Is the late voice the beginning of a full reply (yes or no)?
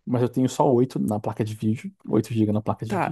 yes